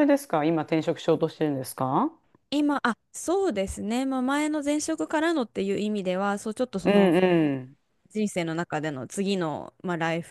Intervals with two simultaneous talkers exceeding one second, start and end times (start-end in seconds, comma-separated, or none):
none